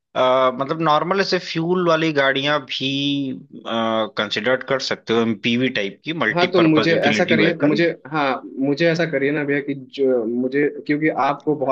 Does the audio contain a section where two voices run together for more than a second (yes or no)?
yes